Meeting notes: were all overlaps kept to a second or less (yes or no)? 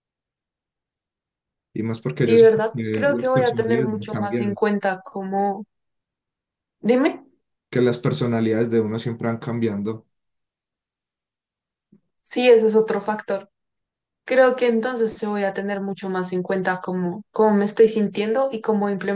no